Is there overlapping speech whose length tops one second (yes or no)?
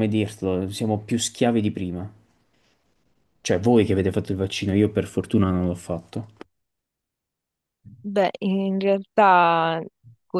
no